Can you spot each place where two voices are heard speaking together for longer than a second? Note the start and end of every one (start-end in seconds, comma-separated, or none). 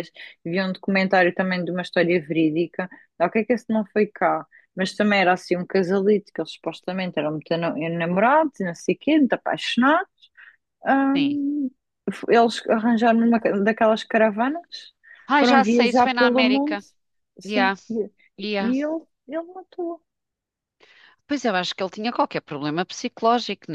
15.4-16.8